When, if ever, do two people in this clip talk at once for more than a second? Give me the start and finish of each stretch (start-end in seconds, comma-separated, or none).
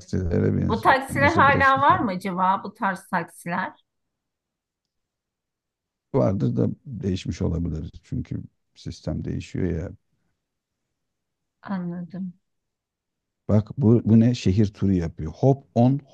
0.7-2.1